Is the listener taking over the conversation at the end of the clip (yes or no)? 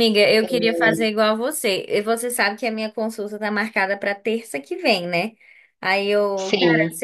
no